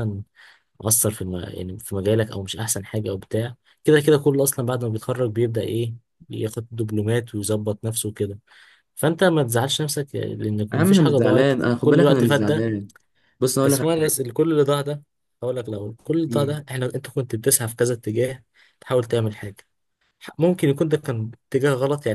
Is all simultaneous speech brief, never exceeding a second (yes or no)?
no